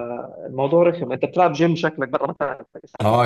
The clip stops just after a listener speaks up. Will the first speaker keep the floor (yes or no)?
no